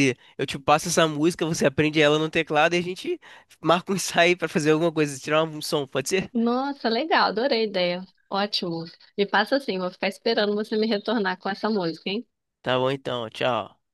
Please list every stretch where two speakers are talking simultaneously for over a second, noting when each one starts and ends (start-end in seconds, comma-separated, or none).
none